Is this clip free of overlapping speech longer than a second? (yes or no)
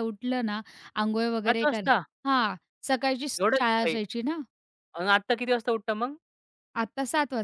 yes